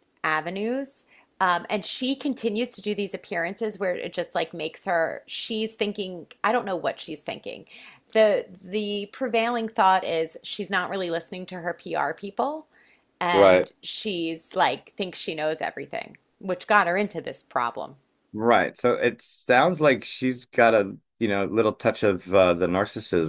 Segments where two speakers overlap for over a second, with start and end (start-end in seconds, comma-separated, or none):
none